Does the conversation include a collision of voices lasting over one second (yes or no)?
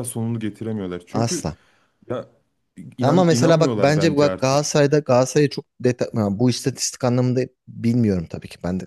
yes